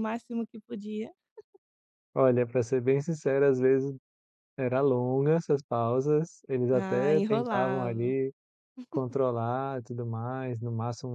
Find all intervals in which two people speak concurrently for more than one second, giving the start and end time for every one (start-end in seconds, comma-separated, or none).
6.7-8.2